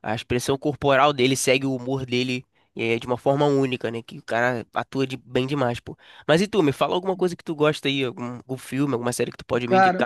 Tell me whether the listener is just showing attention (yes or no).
no